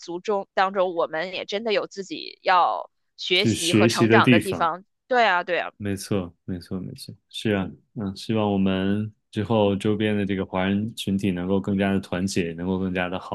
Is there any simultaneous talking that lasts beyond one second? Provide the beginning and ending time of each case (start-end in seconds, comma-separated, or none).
3.3-4.7